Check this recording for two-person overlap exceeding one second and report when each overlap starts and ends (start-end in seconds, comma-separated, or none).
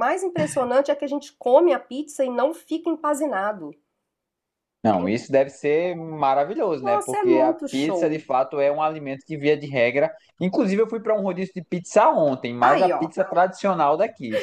6.8-8.2